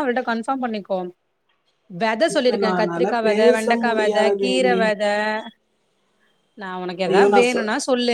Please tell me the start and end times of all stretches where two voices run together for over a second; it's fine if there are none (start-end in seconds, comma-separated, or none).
2.3-4.8